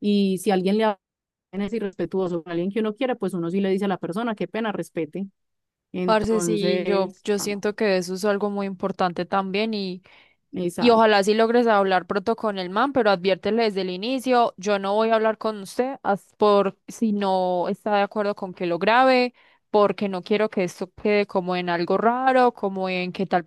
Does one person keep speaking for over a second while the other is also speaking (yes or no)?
yes